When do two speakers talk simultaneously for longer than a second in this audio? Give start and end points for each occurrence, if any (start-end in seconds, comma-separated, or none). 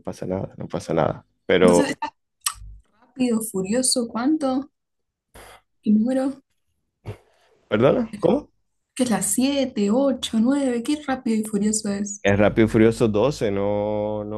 none